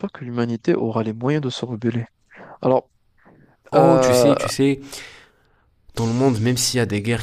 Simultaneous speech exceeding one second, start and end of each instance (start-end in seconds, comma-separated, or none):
none